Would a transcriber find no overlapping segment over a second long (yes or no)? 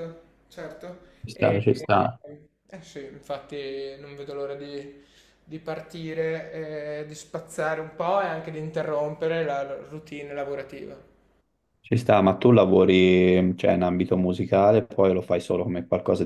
yes